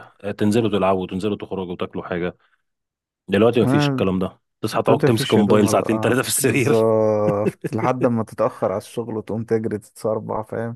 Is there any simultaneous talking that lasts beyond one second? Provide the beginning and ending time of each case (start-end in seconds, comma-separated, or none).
4.9-6.9